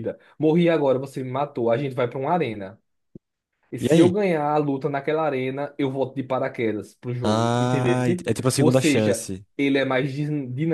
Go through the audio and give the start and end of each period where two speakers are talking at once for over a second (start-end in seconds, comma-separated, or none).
7.2-9.4